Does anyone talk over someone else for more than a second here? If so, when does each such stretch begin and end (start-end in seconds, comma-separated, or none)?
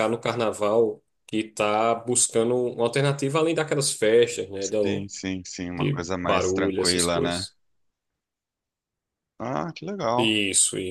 5.7-7.5